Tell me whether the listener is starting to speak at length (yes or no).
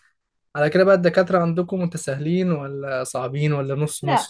yes